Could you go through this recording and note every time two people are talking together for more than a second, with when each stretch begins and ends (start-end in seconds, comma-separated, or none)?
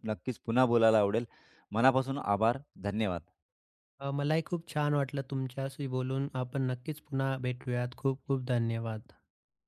none